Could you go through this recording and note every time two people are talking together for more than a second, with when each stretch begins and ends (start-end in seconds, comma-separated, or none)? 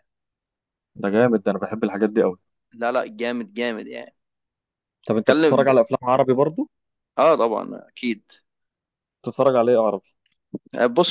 none